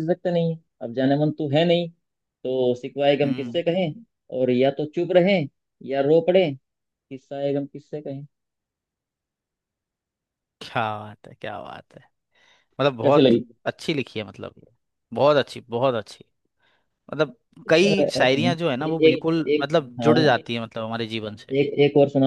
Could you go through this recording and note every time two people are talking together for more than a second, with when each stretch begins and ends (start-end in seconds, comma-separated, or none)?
17.6-20.2